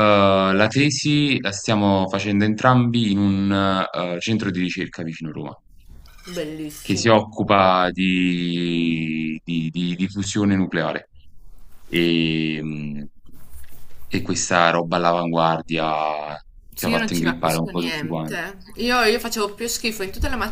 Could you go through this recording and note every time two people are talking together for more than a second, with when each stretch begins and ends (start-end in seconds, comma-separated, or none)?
16.8-18.5